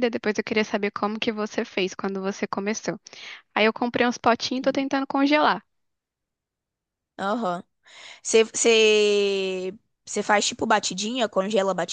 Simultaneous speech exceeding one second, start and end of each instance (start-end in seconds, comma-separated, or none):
none